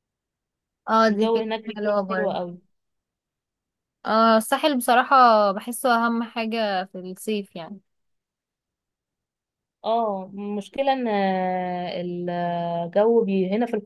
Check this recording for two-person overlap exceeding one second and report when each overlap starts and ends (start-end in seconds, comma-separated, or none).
1.1-2.4